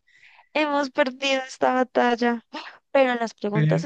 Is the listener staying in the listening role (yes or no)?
yes